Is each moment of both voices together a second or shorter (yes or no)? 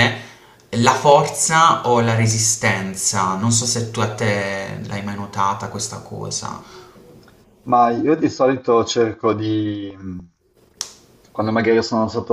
yes